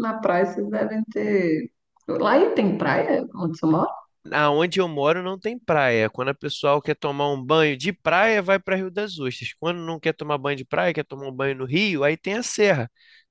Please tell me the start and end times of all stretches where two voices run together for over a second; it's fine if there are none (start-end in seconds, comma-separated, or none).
none